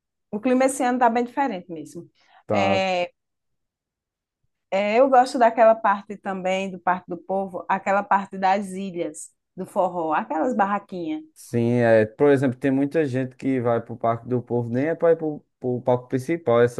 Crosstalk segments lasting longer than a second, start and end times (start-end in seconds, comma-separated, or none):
none